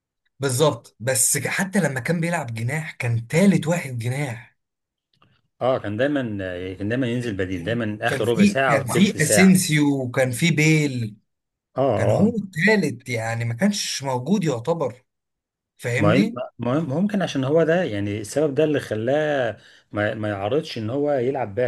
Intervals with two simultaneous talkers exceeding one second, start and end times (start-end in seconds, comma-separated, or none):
8.1-9.5